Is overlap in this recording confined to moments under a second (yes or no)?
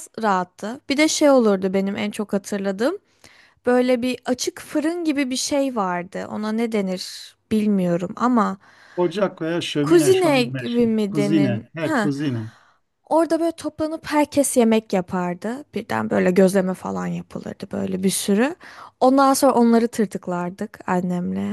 no